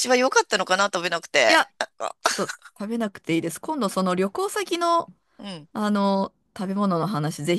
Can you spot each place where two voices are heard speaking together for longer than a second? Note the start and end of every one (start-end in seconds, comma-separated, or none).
none